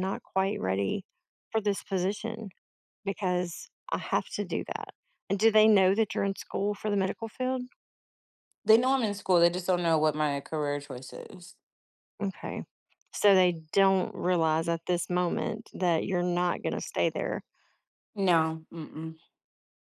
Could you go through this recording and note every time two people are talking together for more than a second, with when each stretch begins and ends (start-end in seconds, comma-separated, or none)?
none